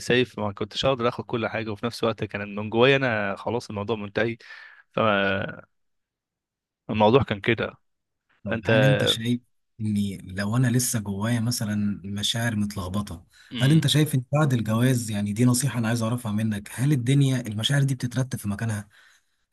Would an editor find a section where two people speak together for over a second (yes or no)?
no